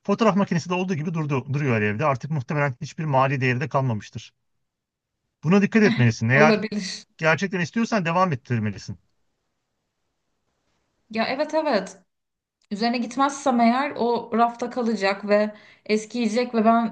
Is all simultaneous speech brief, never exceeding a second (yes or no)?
yes